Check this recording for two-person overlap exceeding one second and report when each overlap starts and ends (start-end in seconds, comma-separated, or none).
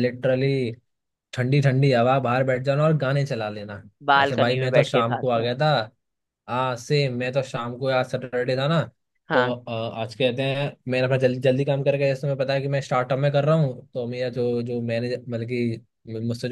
4.2-5.5